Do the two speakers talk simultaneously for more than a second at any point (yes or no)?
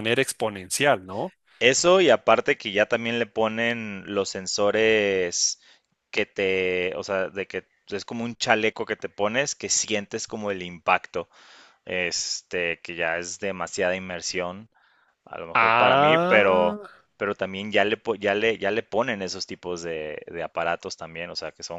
yes